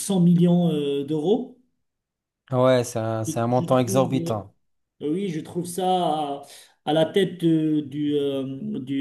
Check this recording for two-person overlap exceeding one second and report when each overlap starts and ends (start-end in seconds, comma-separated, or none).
3.2-4.5